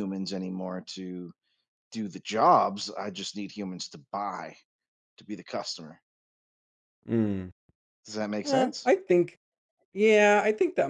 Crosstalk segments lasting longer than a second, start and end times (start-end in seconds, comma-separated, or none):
none